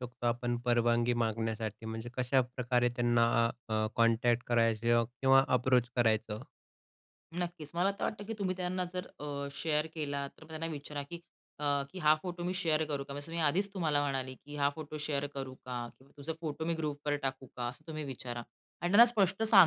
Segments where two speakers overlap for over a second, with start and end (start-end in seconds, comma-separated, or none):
none